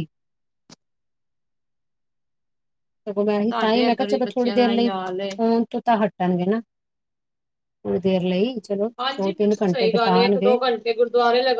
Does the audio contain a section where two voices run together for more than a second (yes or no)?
yes